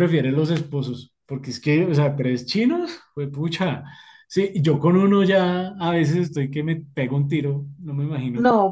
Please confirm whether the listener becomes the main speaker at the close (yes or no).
yes